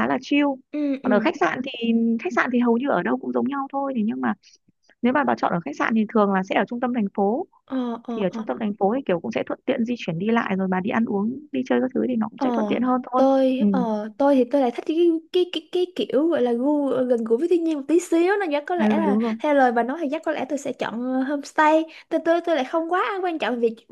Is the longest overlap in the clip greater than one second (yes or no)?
no